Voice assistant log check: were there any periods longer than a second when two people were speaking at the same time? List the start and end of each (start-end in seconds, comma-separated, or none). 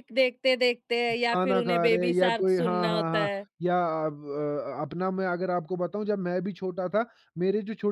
1.3-3.5